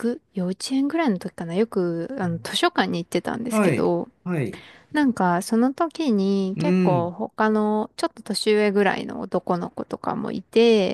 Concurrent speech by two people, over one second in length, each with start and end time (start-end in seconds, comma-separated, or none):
none